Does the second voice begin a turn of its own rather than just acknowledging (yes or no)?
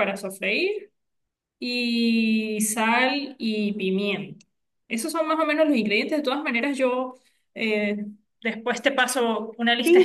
yes